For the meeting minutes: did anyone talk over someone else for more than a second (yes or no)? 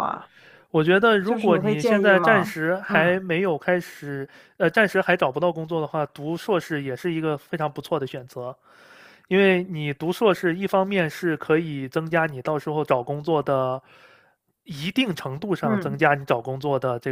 yes